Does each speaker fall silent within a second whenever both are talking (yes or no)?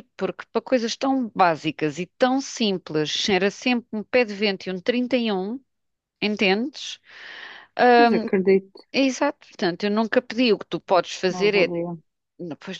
yes